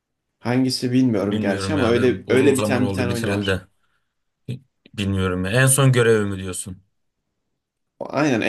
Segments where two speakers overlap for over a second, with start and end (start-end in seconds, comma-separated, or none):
1.3-3.6